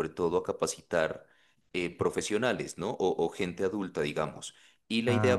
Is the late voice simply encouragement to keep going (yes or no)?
yes